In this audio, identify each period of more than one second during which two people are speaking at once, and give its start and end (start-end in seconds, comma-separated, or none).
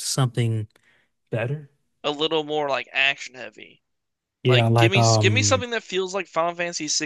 4.4-5.7